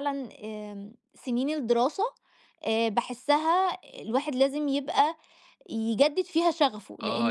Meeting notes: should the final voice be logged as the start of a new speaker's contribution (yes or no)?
yes